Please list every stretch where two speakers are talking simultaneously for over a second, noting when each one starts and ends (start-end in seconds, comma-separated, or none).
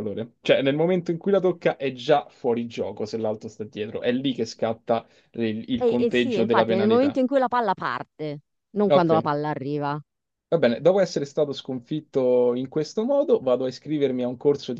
5.8-7.2